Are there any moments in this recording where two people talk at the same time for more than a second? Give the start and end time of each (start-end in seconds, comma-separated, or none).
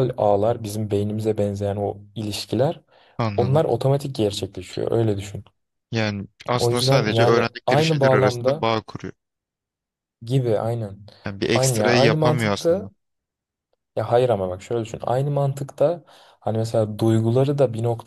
6.6-8.7, 11.5-12.9